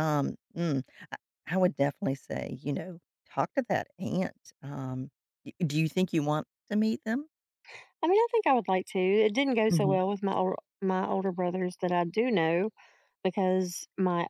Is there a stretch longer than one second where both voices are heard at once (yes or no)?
no